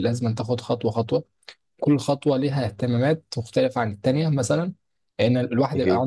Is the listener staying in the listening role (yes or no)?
yes